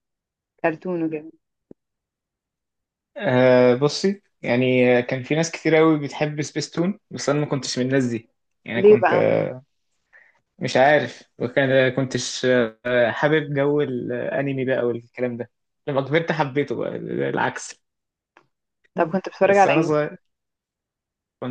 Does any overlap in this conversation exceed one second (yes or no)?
no